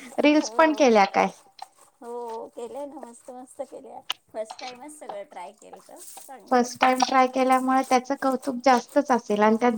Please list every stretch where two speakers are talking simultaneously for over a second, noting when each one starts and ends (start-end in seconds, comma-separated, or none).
none